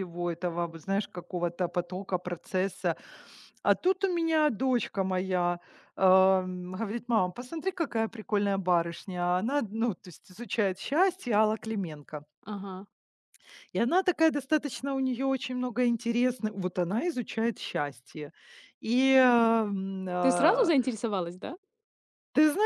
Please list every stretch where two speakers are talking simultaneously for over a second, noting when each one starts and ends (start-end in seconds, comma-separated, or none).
none